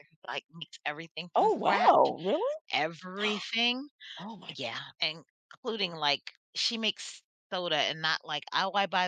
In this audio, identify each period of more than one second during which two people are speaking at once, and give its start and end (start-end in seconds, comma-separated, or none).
none